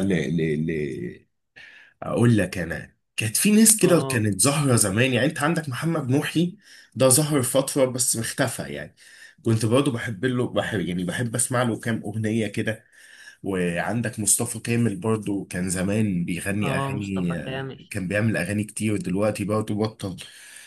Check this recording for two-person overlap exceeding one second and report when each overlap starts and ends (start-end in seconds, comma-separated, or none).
16.6-17.9